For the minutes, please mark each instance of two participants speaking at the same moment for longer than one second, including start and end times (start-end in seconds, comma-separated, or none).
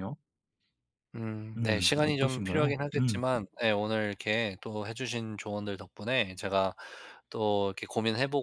1.6-3.2